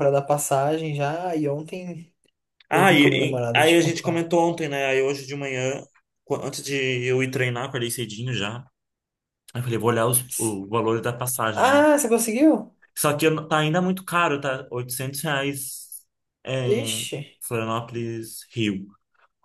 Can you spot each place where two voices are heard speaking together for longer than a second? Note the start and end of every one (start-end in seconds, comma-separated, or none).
2.7-4.2